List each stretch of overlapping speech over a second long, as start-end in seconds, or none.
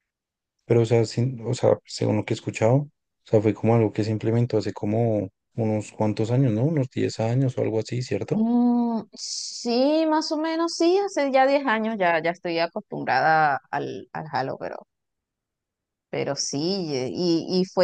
none